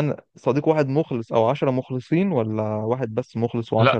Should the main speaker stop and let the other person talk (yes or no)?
yes